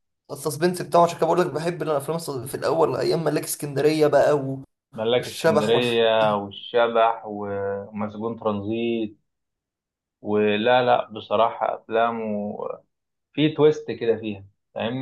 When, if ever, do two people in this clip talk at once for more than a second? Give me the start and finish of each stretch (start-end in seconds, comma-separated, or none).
5.2-6.4